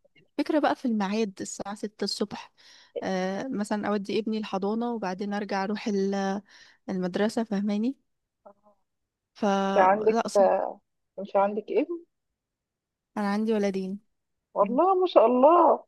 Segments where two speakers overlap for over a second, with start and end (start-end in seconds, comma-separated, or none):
none